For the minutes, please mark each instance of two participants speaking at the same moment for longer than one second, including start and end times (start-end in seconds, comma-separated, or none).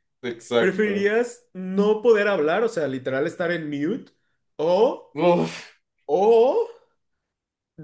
none